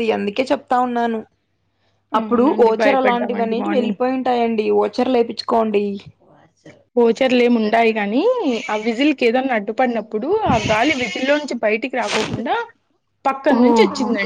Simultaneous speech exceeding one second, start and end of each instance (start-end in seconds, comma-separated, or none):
2.2-4.0